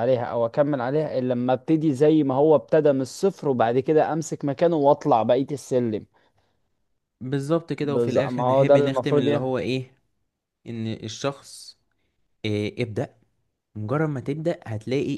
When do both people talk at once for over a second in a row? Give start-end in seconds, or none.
7.8-9.6